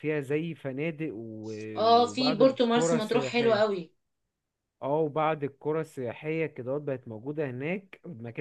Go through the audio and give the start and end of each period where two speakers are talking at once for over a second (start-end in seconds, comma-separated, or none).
1.9-3.6